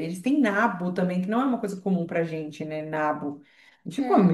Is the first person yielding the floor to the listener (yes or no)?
no